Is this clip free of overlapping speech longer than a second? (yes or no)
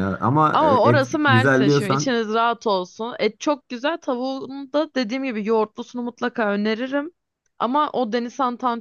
no